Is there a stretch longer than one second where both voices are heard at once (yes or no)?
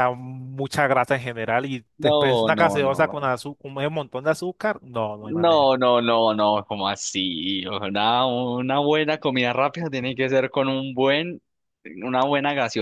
yes